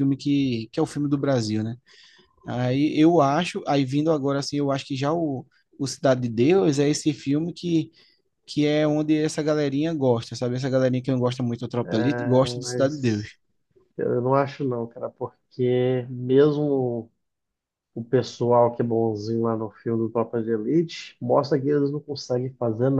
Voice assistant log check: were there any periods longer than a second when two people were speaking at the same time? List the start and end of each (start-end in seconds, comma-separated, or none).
11.8-13.3